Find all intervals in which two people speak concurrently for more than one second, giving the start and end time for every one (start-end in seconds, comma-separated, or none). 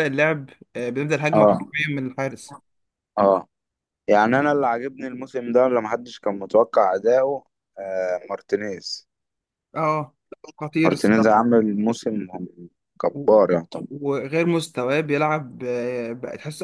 none